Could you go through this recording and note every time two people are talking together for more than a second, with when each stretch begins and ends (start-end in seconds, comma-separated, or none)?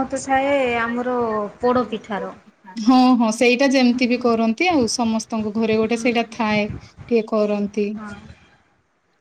none